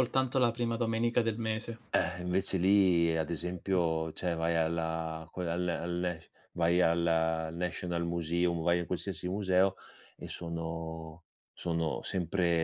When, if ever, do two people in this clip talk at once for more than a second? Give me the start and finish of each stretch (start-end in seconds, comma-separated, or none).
none